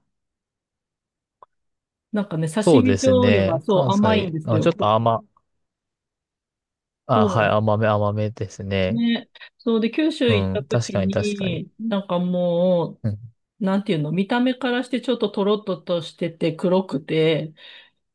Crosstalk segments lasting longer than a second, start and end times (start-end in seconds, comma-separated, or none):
2.6-5.1, 10.3-11.6